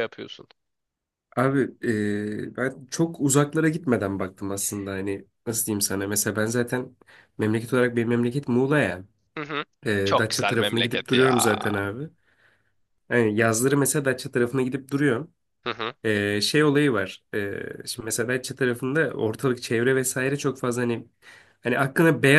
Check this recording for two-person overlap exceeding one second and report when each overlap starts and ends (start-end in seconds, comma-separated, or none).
10.1-11.5